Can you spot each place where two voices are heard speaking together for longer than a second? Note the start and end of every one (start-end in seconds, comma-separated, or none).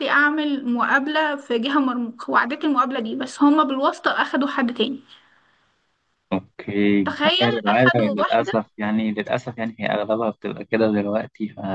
7.0-8.5